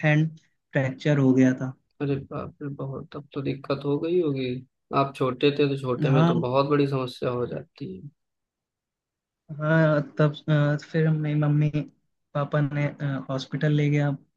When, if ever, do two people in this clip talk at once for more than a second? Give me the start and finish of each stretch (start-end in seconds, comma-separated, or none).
none